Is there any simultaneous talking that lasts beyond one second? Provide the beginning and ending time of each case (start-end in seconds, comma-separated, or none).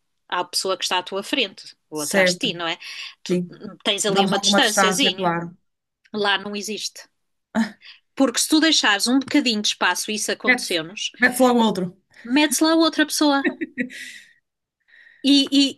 4.1-5.3